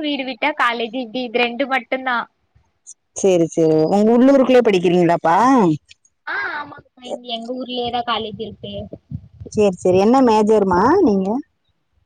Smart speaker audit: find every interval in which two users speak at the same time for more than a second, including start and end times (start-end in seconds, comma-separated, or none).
none